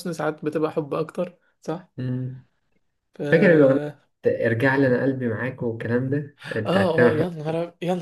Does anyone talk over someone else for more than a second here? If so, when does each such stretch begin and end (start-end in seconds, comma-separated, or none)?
none